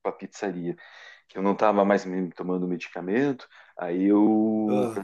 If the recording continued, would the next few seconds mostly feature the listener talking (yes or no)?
no